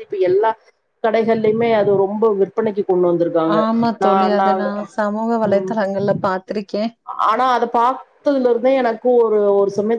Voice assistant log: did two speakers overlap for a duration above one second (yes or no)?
no